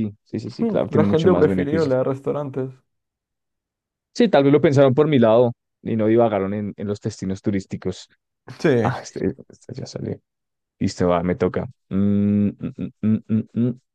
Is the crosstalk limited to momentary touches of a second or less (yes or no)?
no